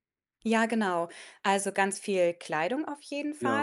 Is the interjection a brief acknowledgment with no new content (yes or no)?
yes